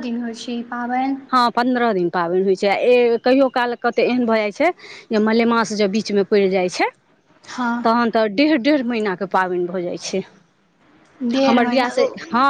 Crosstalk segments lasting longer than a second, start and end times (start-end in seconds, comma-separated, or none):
none